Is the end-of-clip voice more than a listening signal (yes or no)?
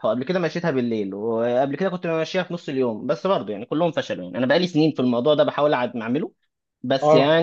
no